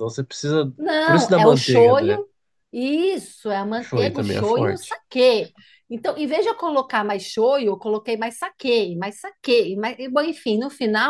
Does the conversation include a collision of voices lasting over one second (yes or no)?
yes